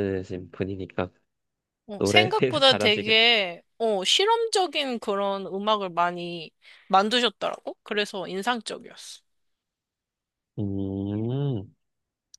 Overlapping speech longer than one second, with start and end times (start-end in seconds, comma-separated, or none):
2.0-3.3